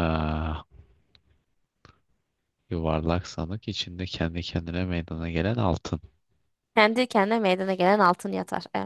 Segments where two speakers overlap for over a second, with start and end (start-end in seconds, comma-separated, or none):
none